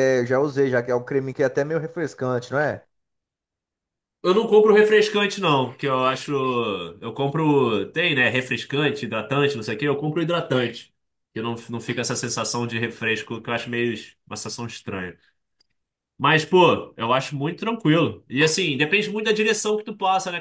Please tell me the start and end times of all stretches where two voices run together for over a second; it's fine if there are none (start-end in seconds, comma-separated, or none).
none